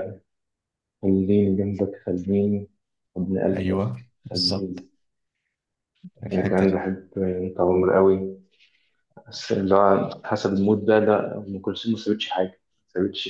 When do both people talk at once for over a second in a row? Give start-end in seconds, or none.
3.6-4.9